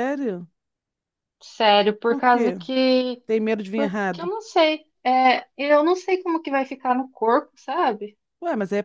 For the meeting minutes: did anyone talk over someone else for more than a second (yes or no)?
no